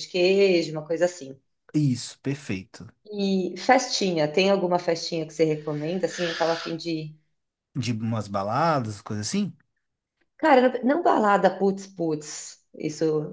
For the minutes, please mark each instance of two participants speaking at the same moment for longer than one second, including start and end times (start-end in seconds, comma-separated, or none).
none